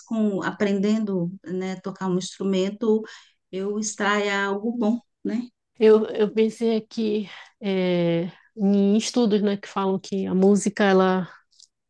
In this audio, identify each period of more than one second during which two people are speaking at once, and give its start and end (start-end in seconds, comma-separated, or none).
none